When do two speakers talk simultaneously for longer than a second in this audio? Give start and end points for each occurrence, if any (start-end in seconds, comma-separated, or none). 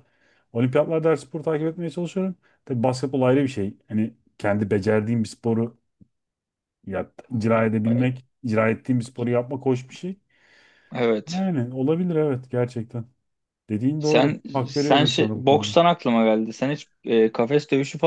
14.0-15.8